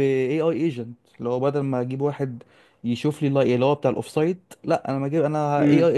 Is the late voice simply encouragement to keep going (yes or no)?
yes